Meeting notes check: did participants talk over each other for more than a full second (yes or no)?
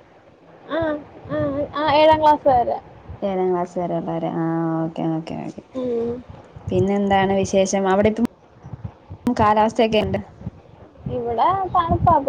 no